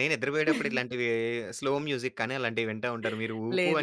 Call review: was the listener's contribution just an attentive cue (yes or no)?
yes